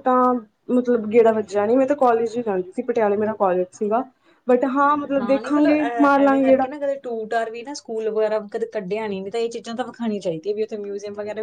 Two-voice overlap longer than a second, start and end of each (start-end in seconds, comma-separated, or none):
5.2-6.7